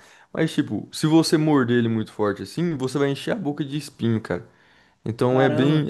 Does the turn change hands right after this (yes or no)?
yes